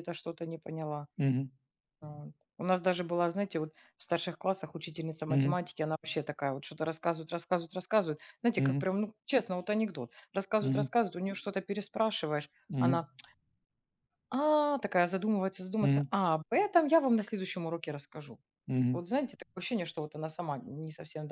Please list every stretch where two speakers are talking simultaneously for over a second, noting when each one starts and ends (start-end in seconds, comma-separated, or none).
none